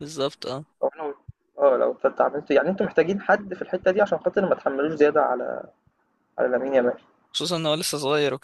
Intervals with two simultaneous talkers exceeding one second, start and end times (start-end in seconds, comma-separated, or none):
none